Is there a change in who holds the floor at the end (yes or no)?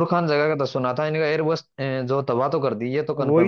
yes